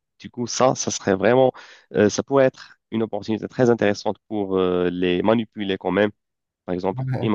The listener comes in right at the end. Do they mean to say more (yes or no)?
no